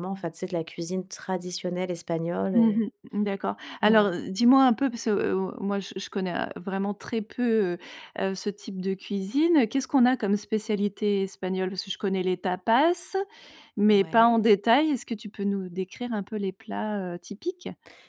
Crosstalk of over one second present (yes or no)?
no